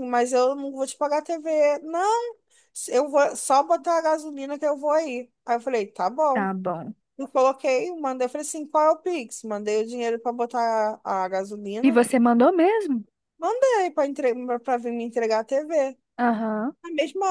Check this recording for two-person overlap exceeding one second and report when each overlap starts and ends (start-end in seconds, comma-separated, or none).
none